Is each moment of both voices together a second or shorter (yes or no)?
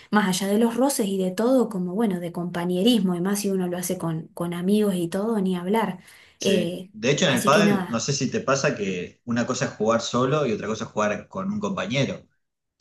no